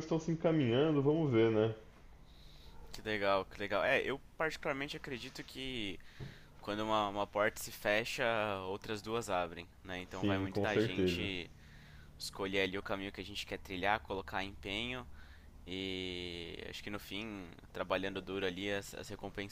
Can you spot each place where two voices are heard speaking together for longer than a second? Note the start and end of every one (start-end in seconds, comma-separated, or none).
10.1-11.3